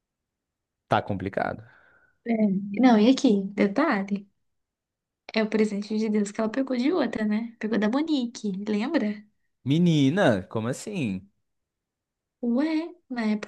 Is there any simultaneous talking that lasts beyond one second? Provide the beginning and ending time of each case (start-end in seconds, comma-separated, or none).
none